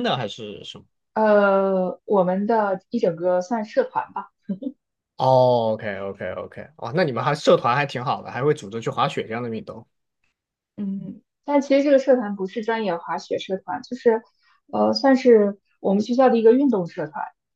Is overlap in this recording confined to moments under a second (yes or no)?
yes